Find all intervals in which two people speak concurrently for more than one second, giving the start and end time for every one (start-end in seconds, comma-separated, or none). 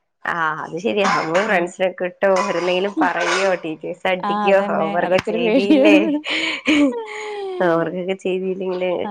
4.3-6.0